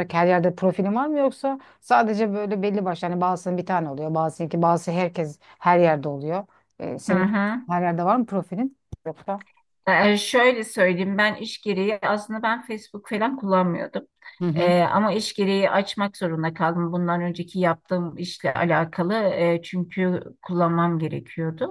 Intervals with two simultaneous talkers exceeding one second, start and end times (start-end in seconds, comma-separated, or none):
none